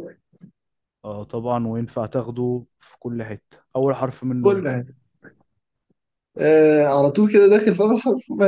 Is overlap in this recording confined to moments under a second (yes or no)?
yes